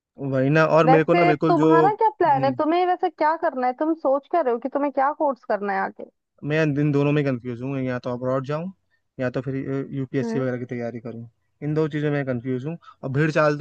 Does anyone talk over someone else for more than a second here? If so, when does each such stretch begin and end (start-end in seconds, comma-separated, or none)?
0.9-2.6